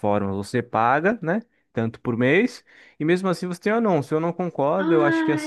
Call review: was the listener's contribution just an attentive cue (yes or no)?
no